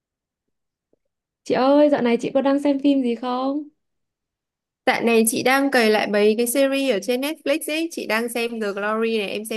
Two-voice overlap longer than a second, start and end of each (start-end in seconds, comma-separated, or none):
none